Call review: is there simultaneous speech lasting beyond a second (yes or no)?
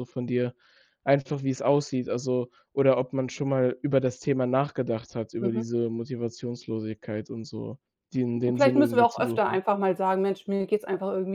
yes